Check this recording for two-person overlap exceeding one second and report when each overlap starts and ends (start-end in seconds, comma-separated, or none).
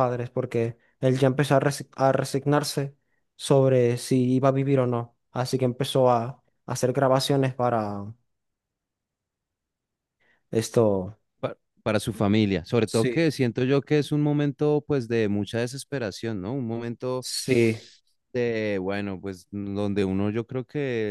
none